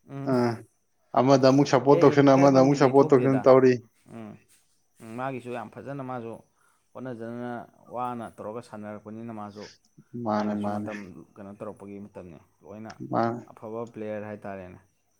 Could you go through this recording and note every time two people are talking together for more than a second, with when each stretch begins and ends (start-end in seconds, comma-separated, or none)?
1.9-3.5